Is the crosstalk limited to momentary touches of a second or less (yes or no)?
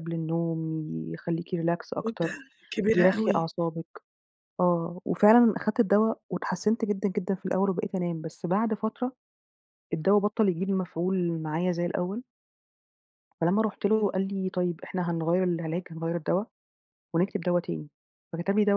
yes